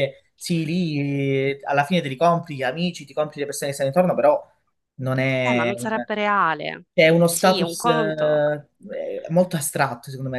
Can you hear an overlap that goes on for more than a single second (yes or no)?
yes